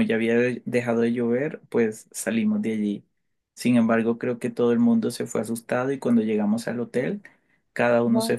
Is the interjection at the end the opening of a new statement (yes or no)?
no